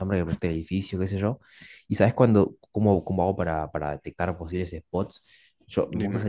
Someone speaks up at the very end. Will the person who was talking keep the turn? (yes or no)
yes